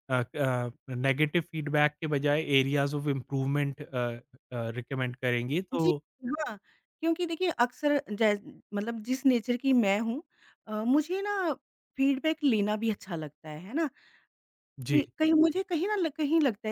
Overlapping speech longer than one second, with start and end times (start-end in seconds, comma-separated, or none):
none